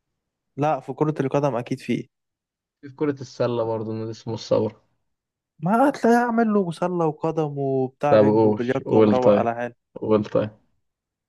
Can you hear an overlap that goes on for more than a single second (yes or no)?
yes